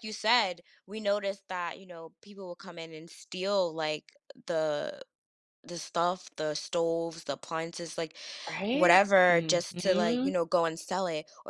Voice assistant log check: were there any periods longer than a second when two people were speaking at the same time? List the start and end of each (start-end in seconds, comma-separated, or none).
8.7-10.3